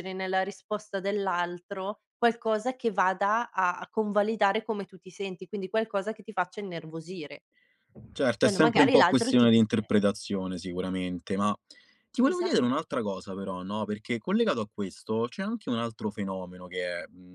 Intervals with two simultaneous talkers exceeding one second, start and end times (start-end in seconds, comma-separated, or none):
8.4-9.9